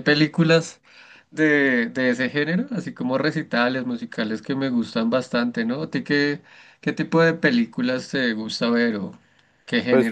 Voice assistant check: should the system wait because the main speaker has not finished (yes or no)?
no